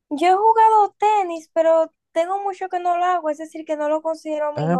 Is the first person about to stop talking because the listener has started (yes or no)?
yes